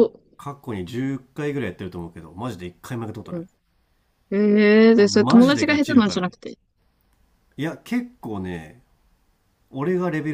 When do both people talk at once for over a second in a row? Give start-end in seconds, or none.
5.0-6.3